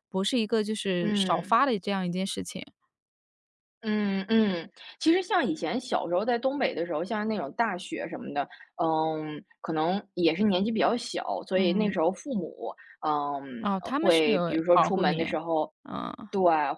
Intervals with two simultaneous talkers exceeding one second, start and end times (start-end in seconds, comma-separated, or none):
13.6-15.2